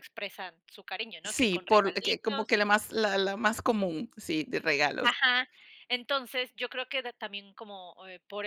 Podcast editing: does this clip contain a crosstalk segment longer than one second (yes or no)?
yes